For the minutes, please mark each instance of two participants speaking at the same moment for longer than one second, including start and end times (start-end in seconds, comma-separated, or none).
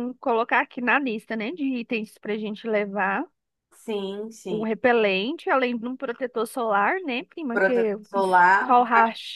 none